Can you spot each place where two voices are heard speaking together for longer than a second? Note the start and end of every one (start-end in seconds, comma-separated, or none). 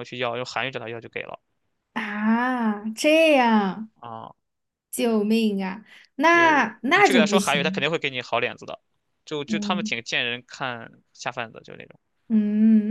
6.2-7.9